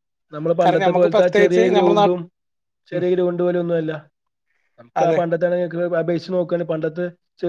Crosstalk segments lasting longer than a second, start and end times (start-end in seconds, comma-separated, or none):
0.6-2.2